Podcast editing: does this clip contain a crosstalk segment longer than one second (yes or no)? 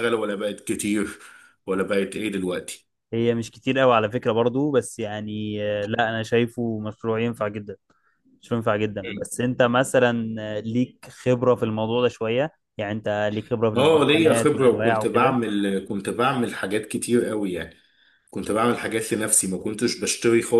yes